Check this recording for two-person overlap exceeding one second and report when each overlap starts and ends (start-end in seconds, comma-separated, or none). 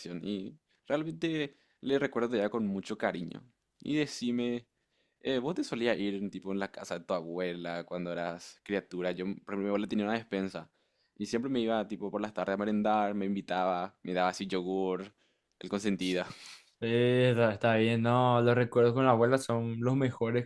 none